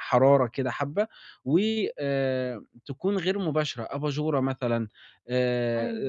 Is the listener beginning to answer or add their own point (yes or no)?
no